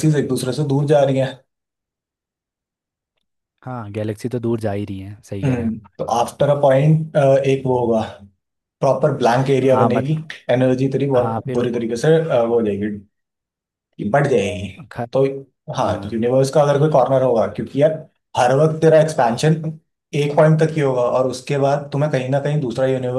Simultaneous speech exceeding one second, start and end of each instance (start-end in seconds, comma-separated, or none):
none